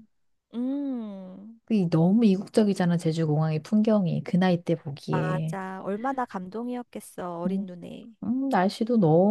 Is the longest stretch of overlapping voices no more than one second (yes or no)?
yes